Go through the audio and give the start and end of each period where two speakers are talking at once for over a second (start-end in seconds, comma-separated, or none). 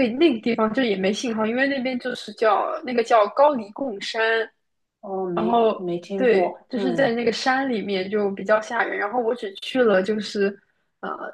5.3-7.1